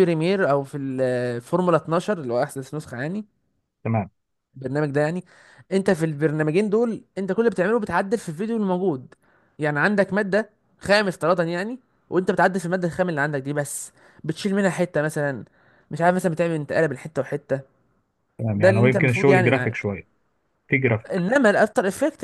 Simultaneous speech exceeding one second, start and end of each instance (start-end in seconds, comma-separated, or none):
18.5-19.9